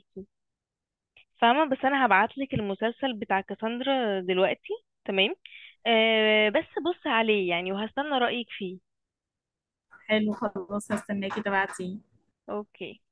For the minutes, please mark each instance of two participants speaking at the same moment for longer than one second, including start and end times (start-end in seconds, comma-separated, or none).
none